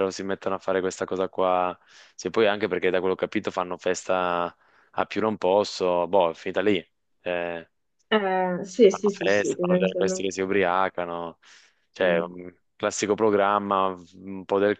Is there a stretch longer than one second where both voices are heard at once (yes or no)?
yes